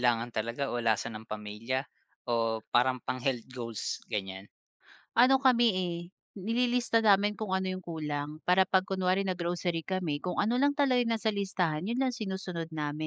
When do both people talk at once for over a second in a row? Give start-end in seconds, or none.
none